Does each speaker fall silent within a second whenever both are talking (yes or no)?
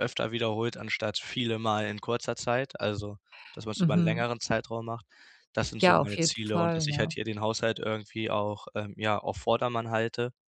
no